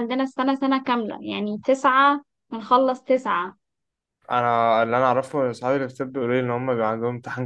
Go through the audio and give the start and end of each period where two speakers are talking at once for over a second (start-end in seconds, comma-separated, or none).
none